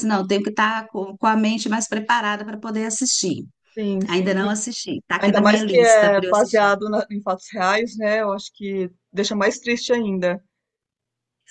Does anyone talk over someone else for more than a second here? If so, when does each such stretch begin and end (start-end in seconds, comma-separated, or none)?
5.2-6.7